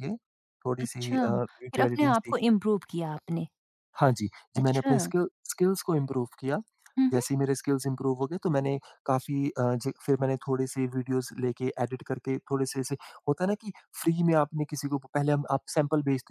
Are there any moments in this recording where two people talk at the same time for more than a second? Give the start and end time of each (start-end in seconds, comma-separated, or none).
0.8-2.3